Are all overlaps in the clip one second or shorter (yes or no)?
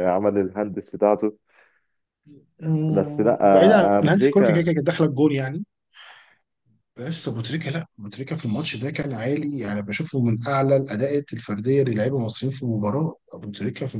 no